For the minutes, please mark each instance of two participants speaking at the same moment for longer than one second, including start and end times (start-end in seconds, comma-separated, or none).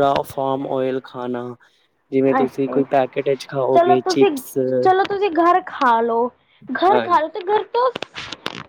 none